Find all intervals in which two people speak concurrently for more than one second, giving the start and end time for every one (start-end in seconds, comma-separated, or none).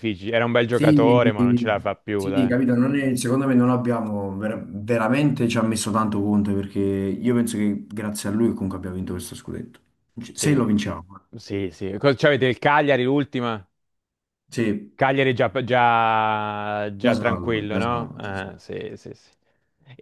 17.0-18.6